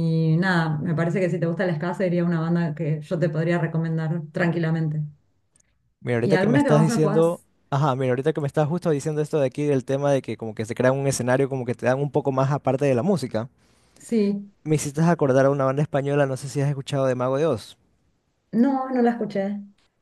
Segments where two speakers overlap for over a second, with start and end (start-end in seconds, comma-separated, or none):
6.2-7.5